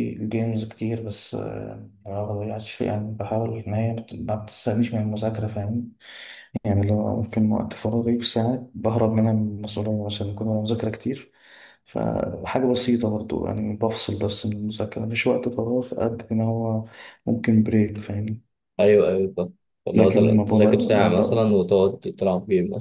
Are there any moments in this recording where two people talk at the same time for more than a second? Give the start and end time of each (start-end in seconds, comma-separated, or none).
19.9-21.5